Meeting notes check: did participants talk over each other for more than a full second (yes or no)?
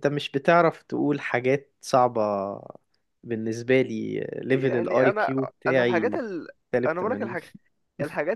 yes